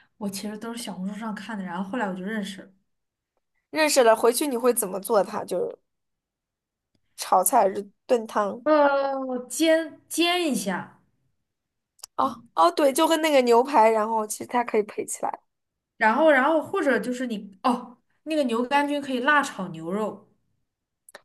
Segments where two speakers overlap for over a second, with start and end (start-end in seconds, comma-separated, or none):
none